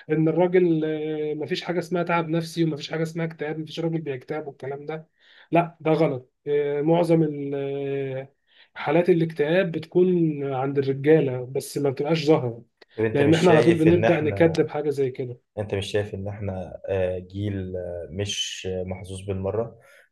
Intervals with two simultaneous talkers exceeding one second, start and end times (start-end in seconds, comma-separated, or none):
13.1-14.5